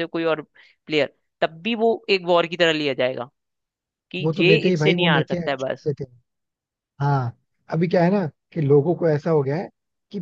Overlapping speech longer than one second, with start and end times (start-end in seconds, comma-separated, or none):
4.2-5.9